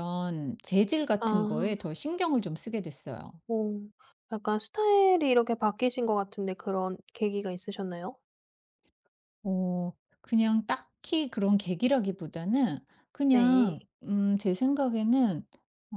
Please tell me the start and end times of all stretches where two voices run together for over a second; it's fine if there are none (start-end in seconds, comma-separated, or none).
none